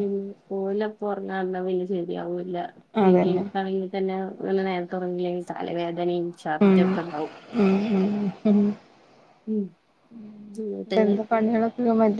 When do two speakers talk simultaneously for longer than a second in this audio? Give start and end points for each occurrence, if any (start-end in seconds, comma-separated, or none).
none